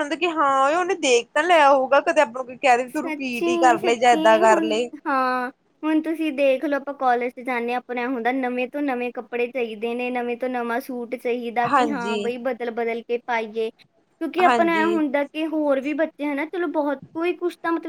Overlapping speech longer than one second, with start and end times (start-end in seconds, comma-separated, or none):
2.9-4.9